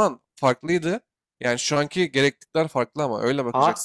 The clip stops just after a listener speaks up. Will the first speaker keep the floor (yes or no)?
yes